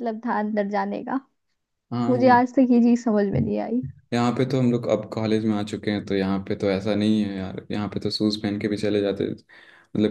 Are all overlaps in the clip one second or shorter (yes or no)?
yes